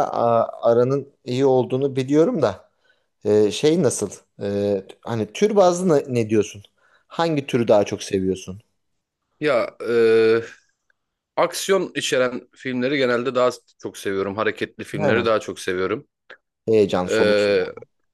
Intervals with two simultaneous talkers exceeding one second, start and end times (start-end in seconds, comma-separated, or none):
none